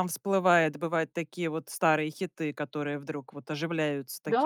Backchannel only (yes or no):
no